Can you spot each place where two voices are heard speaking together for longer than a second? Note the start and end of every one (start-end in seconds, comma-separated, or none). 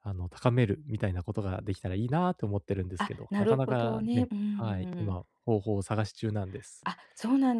3.0-5.2